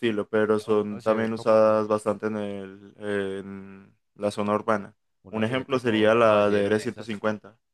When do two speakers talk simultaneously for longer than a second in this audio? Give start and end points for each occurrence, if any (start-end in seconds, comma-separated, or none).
0.6-1.9, 5.3-7.2